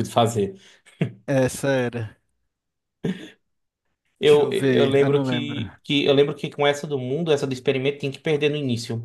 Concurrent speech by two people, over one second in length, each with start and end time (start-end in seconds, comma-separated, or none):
4.2-5.6